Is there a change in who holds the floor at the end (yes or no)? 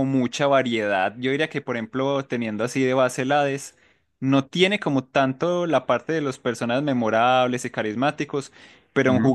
no